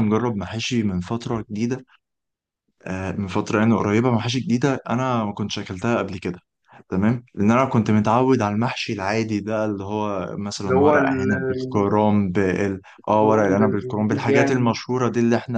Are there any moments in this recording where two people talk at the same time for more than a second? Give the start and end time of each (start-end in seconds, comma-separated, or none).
10.6-11.9, 13.0-14.8